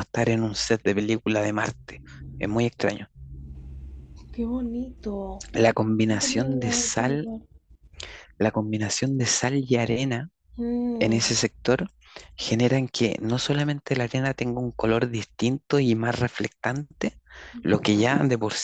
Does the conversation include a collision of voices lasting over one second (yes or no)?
yes